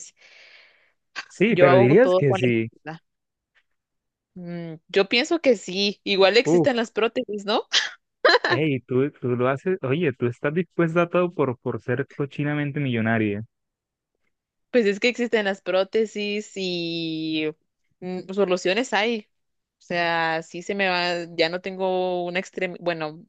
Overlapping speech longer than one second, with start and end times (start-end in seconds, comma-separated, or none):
1.5-2.7